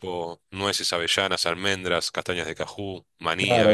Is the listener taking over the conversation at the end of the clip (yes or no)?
yes